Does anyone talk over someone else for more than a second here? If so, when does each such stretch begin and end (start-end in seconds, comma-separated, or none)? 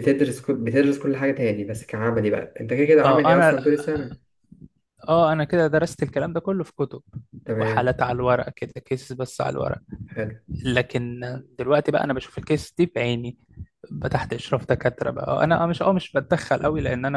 none